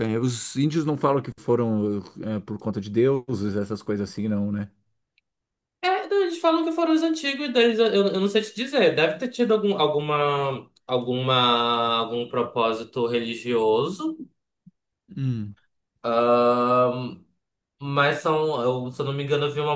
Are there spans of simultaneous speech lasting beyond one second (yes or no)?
no